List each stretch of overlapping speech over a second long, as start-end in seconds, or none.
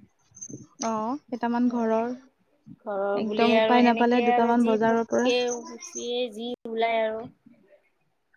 3.2-5.3